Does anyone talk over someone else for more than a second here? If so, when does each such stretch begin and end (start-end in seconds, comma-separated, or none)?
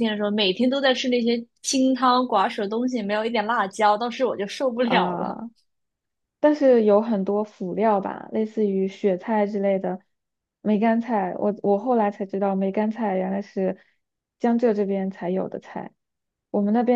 none